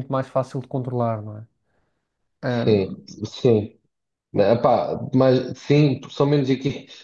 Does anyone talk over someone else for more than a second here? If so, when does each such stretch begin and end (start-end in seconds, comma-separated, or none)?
none